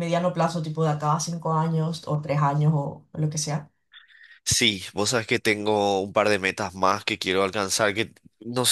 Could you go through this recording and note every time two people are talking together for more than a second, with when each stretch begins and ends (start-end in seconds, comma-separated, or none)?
none